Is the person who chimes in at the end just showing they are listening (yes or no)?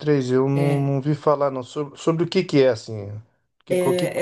no